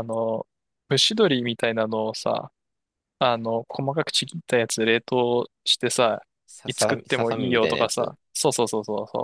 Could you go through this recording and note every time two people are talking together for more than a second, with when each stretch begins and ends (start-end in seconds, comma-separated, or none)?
6.7-8.2